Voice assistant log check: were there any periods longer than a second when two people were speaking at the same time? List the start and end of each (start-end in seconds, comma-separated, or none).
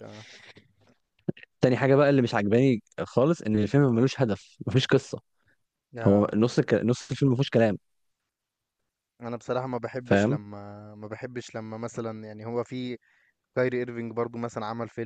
none